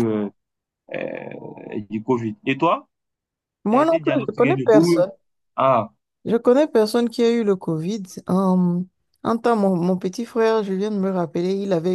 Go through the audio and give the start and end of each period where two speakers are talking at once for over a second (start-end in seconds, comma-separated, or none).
3.7-5.0